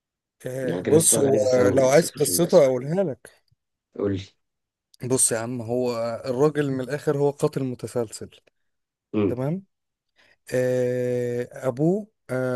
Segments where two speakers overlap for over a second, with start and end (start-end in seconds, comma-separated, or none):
0.6-2.6